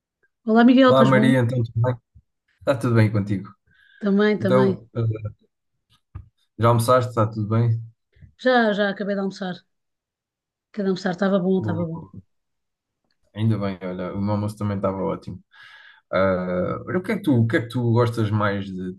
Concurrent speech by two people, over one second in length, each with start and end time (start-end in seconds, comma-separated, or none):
none